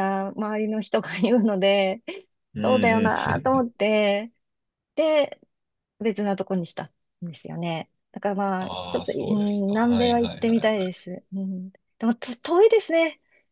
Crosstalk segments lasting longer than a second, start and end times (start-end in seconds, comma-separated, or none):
8.6-10.9